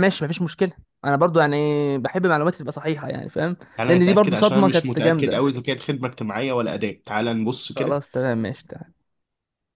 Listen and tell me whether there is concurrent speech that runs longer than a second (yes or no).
yes